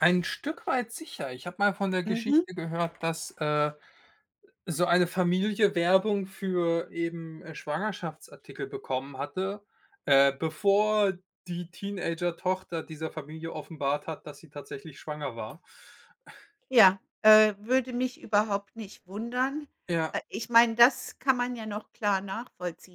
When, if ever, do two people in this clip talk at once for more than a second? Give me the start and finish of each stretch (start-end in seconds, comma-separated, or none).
none